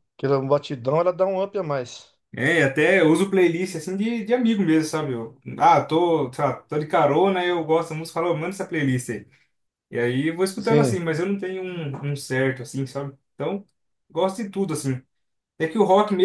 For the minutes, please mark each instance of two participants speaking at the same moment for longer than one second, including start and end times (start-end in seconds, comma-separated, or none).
none